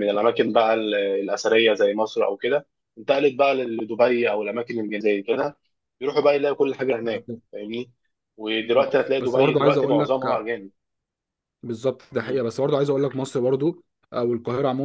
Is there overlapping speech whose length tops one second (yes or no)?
yes